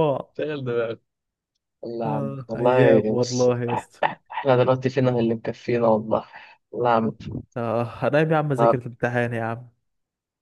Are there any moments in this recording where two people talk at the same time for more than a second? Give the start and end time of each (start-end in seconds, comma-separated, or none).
2.1-3.5